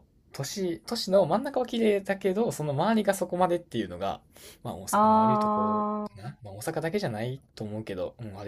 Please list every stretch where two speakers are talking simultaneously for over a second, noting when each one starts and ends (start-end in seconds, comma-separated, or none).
4.9-6.4